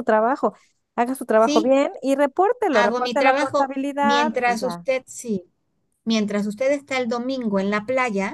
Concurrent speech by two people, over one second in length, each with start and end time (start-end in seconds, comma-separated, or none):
2.7-4.8